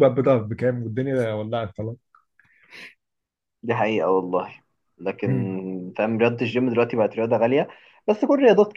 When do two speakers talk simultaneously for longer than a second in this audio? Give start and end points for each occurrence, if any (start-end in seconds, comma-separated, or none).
none